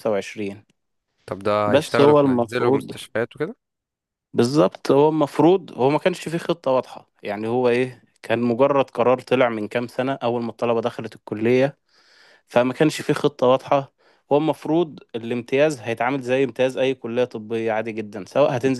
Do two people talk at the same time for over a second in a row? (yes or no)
yes